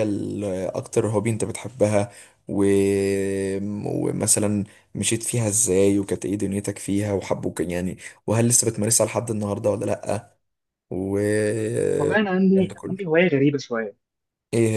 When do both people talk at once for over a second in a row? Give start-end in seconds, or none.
12.0-13.2